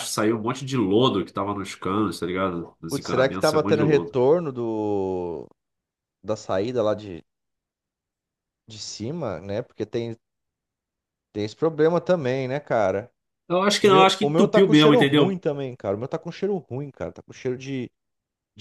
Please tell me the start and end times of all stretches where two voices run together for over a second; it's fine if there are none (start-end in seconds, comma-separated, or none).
2.9-4.2, 13.8-15.4